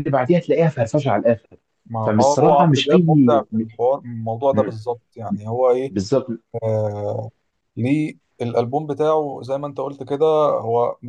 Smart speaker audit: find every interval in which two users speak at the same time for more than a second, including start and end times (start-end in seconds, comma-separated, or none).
2.0-3.4